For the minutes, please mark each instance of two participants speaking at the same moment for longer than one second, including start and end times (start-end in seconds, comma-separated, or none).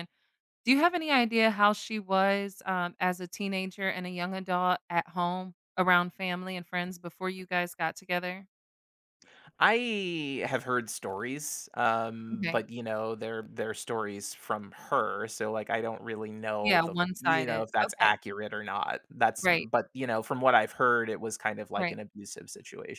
16.6-18.1